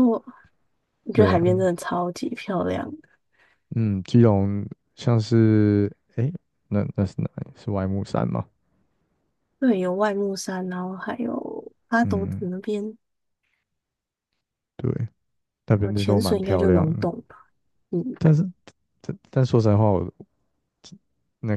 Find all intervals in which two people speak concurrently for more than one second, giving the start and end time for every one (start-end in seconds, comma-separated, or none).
15.8-17.1